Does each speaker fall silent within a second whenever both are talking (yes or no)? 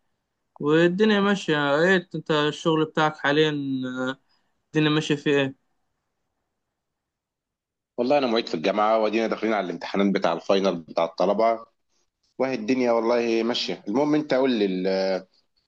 yes